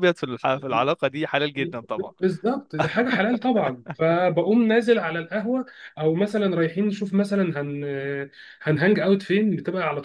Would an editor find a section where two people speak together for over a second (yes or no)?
no